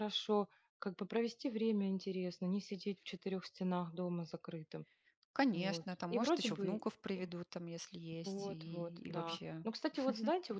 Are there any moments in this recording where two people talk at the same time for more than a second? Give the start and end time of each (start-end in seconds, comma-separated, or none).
5.5-7.2, 8.2-9.7